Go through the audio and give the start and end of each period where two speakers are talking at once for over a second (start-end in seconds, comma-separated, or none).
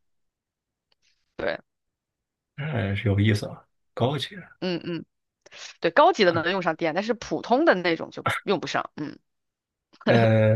none